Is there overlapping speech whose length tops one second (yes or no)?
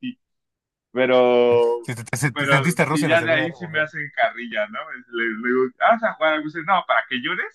yes